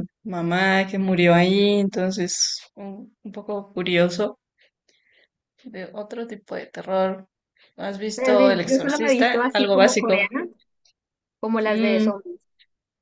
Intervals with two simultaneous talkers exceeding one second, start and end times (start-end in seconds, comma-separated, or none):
8.2-10.3